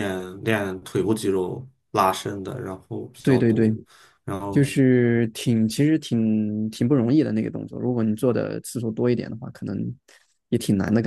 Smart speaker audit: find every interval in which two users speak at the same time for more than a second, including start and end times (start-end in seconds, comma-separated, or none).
none